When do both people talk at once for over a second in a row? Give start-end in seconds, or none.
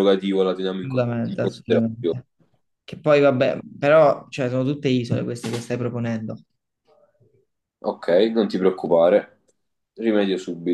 0.8-2.1